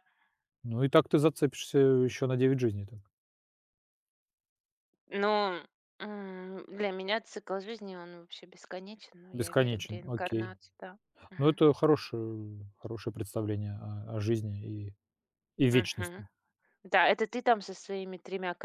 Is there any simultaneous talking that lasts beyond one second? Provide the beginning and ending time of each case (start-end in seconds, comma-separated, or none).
9.3-10.5